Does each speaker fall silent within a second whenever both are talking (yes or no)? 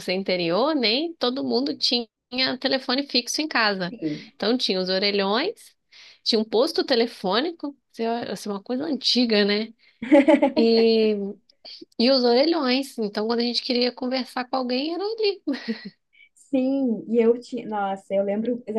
yes